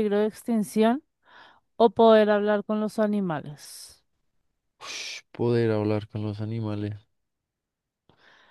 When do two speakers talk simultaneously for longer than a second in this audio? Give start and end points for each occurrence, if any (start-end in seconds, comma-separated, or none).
none